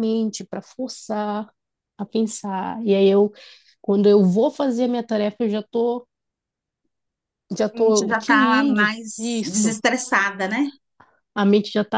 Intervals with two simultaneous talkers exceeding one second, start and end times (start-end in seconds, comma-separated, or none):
7.7-9.8